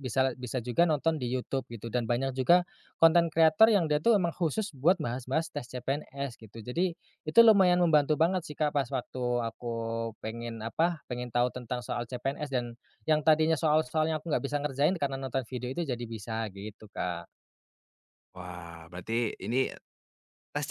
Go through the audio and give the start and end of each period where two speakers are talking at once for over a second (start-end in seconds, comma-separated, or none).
none